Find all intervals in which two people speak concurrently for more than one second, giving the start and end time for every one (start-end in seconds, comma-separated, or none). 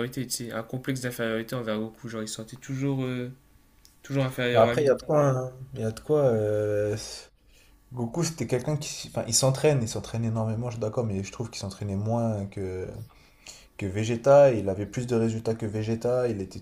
none